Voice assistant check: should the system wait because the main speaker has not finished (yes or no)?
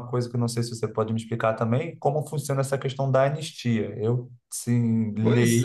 no